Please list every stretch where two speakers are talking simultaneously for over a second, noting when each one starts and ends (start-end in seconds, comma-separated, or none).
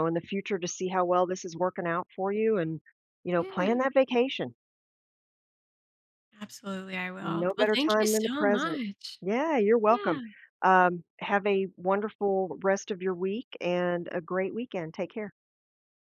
7.2-8.8